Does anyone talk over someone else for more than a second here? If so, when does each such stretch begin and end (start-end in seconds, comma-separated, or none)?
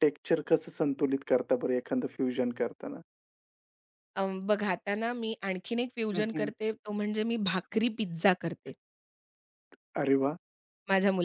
none